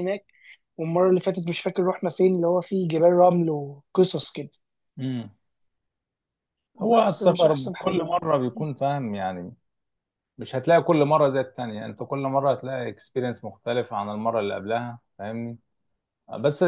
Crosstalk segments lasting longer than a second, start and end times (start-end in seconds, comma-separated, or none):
6.9-8.2